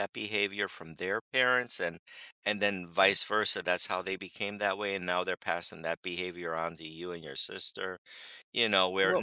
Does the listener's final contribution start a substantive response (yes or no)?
no